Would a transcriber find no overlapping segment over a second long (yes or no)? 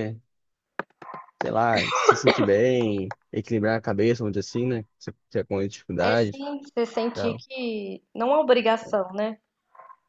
yes